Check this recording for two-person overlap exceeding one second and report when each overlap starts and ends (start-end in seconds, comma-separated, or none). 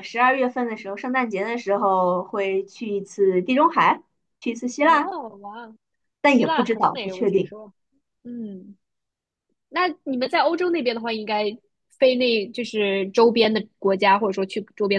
6.3-7.5